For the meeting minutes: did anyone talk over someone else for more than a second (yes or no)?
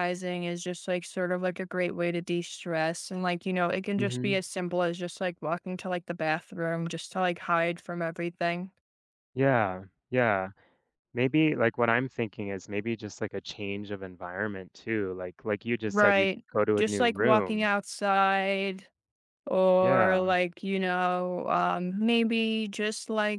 yes